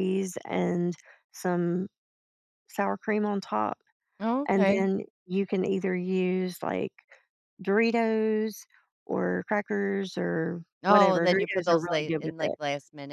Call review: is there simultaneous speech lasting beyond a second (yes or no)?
yes